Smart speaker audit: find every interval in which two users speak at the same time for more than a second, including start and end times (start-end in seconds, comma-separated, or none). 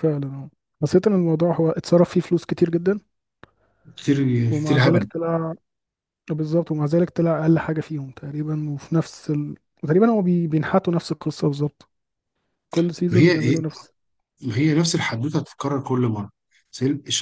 none